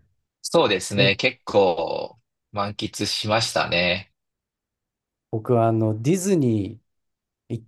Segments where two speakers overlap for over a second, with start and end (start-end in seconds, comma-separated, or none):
none